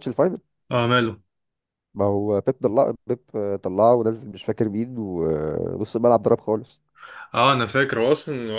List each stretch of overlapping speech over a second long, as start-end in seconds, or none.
none